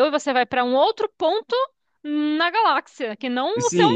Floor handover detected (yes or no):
yes